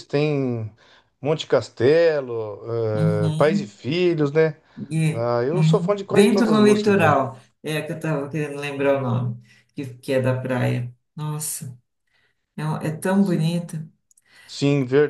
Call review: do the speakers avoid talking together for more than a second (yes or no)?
no